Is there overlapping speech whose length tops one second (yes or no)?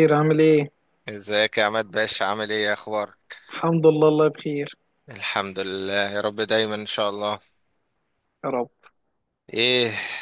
no